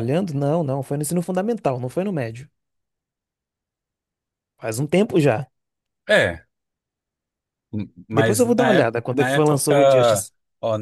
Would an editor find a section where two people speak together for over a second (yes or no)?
yes